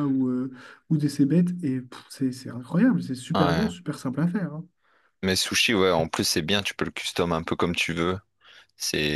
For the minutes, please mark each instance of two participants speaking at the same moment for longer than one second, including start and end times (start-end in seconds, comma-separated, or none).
none